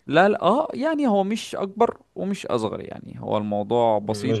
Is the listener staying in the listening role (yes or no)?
no